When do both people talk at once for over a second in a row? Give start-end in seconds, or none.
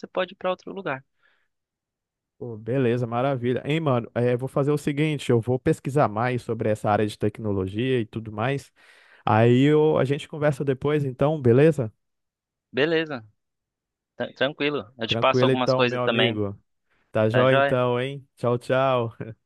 15.1-16.4